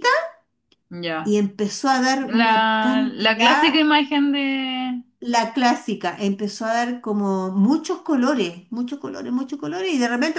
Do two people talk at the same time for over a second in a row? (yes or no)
yes